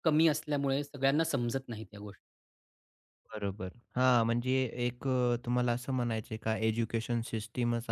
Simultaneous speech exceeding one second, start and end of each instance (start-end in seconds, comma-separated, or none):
none